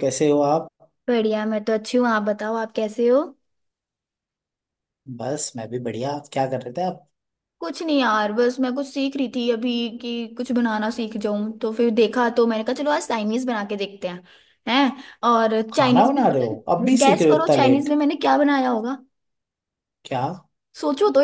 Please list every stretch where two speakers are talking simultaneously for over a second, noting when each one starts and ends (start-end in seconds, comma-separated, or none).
15.7-17.9